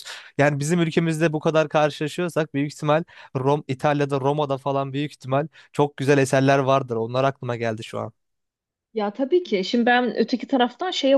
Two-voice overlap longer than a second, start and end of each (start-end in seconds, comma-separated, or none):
none